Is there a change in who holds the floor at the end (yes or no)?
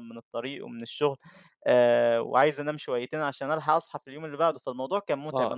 yes